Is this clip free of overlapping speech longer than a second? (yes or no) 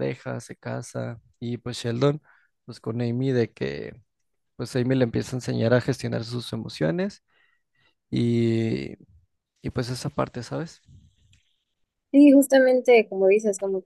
yes